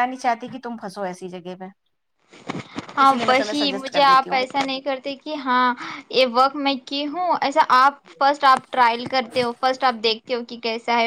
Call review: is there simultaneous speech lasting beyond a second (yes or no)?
yes